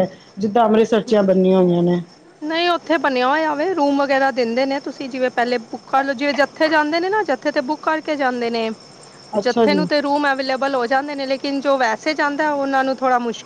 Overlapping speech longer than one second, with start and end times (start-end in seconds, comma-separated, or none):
none